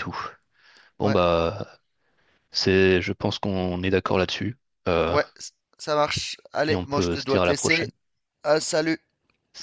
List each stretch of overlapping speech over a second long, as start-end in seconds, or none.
6.7-7.9